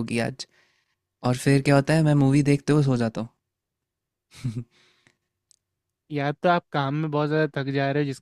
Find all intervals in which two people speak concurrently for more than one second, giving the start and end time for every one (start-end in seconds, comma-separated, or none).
none